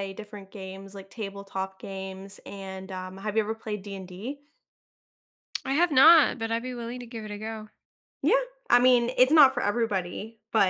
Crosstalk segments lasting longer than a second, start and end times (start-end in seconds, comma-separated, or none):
none